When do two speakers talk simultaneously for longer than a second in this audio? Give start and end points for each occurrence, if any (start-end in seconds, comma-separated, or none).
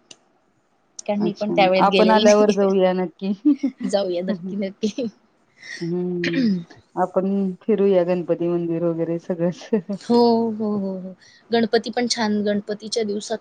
1.2-2.9